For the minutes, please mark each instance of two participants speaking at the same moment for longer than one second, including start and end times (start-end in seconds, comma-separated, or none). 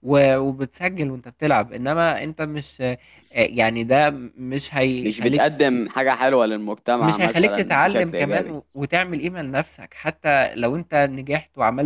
7.0-8.6